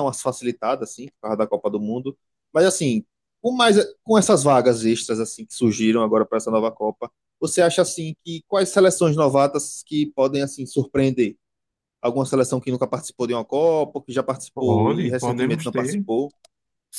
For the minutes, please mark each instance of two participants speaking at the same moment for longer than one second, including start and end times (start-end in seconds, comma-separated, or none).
14.5-16.1